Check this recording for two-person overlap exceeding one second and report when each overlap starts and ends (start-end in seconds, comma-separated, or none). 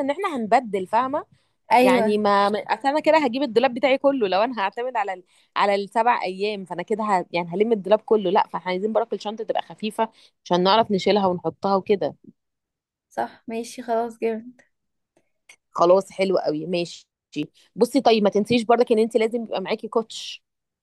none